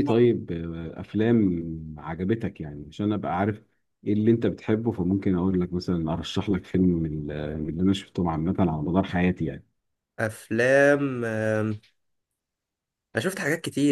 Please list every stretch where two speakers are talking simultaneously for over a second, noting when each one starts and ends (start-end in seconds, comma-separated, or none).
none